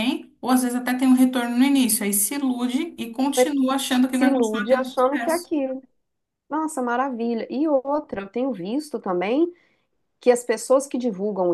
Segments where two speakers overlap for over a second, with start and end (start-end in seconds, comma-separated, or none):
4.1-5.5